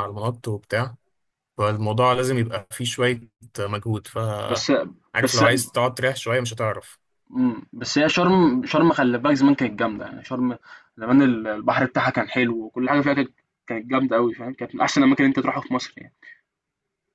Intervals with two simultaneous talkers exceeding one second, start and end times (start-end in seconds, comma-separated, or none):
none